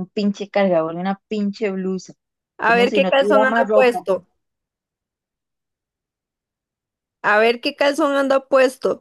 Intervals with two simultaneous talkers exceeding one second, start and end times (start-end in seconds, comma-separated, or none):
2.6-4.1